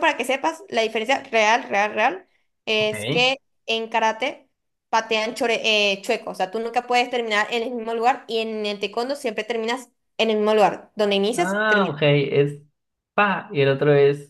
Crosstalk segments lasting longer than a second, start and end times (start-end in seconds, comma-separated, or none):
none